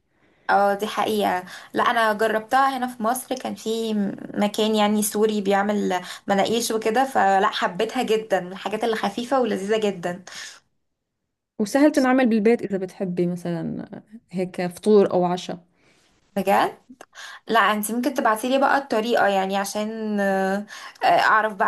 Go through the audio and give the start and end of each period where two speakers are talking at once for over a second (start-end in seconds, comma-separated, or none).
none